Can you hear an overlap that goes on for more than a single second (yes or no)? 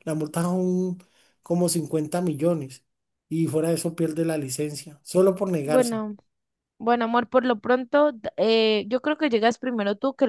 no